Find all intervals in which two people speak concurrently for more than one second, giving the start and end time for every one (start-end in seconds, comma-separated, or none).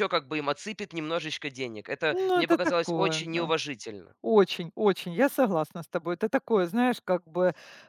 2.1-3.5